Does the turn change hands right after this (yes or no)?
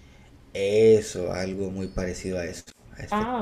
yes